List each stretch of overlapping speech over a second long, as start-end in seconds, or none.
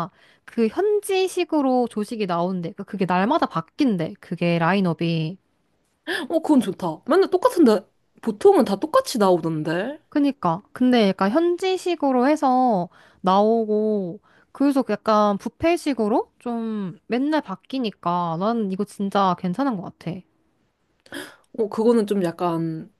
none